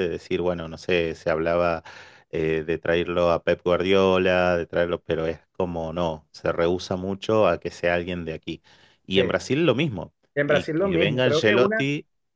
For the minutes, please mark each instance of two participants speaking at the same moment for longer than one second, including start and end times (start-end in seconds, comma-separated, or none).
10.3-11.9